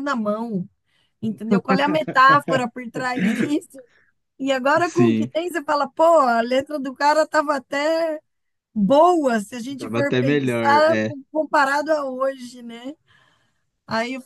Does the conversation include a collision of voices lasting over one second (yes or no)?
yes